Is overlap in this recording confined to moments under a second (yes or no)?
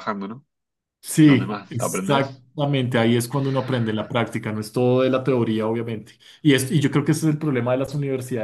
no